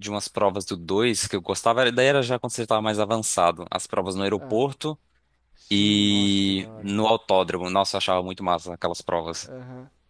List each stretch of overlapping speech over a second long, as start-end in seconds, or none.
5.7-6.9